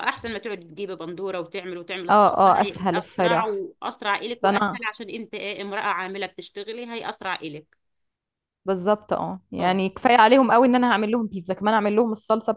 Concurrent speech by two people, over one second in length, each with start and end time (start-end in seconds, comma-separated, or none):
2.1-3.6